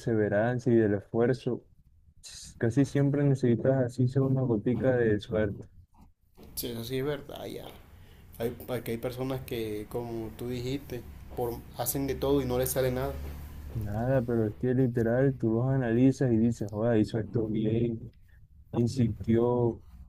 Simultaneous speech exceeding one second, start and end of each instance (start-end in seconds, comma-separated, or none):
none